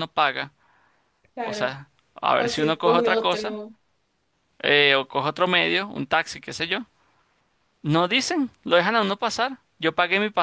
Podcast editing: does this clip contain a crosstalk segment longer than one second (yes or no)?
yes